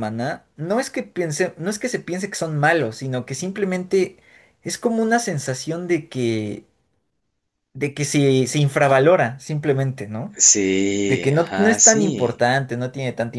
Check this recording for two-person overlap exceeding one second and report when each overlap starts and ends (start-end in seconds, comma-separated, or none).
10.9-12.4